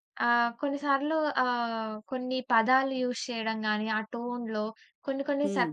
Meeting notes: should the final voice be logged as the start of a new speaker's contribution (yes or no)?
no